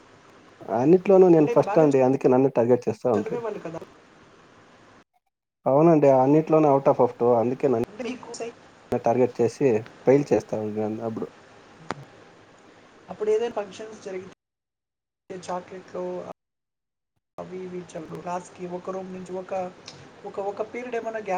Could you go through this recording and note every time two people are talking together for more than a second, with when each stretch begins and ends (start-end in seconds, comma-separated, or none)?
none